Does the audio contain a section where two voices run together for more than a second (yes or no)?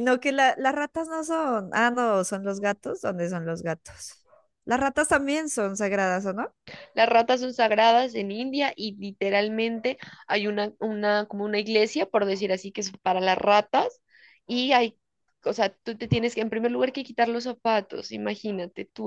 no